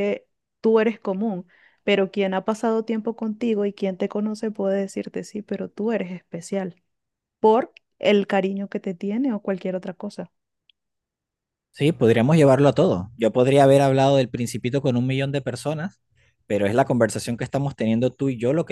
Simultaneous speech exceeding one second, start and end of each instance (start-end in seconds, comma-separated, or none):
none